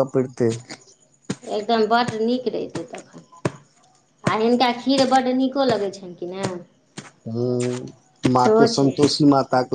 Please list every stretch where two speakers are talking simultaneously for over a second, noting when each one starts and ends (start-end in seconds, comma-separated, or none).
none